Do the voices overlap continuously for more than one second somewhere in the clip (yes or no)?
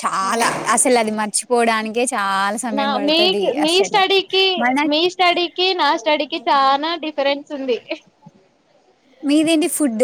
no